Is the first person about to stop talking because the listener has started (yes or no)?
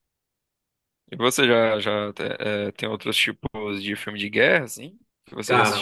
yes